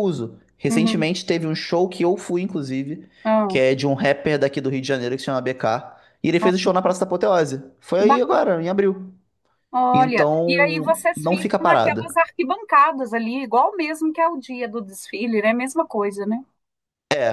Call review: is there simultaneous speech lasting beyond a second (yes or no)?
yes